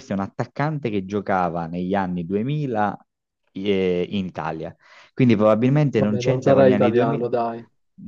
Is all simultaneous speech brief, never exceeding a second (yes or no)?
no